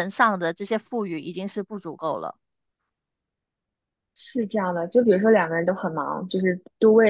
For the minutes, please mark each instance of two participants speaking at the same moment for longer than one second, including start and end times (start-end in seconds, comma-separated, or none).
none